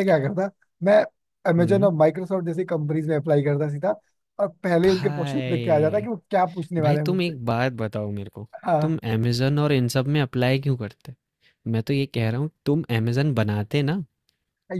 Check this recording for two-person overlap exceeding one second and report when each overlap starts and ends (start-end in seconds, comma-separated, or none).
4.8-6.1